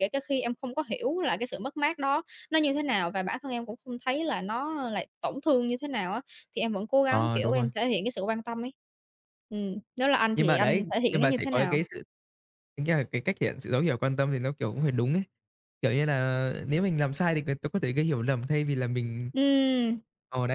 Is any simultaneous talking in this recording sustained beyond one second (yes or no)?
yes